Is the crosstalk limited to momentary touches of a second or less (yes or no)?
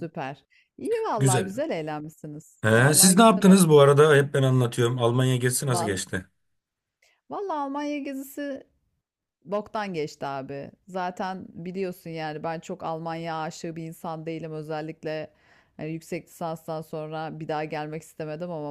no